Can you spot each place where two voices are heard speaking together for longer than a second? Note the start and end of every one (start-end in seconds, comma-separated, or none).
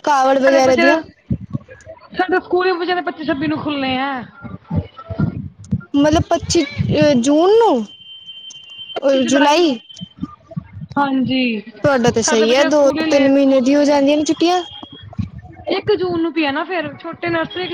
12.2-13.9